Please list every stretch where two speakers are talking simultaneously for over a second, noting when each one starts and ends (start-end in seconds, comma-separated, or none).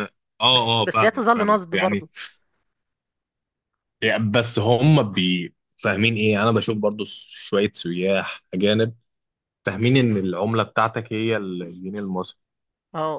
0.5-2.0